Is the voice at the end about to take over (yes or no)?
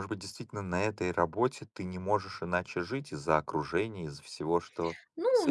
yes